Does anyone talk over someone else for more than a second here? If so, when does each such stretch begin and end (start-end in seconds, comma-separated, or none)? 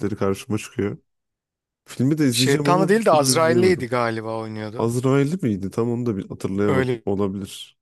2.3-3.9